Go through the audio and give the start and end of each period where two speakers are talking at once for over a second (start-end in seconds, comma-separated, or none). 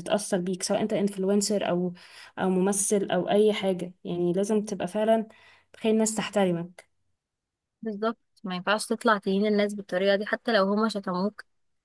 none